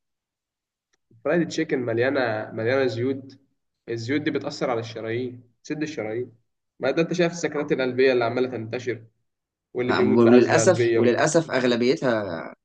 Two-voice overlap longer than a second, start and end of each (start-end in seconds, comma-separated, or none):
9.8-11.3